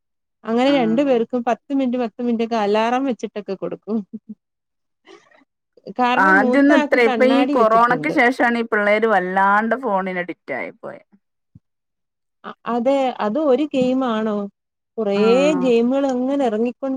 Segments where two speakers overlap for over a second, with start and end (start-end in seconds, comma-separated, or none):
6.3-8.2